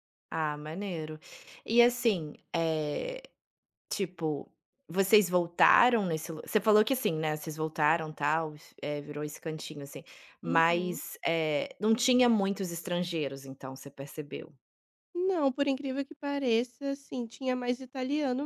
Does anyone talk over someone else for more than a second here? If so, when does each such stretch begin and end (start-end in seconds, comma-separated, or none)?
none